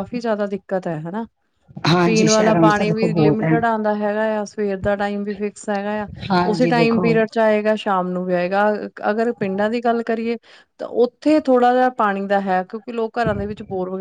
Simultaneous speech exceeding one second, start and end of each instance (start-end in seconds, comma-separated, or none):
2.0-3.5